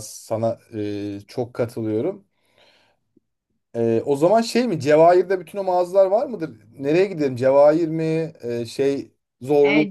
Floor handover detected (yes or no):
yes